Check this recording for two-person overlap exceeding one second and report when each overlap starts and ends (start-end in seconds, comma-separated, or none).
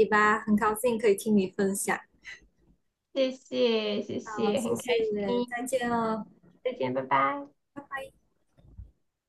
4.2-5.7